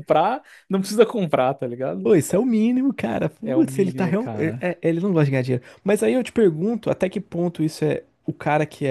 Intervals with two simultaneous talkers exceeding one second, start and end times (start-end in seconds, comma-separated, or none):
3.4-4.7